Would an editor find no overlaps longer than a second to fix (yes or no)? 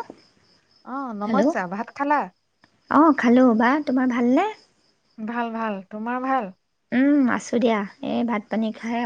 yes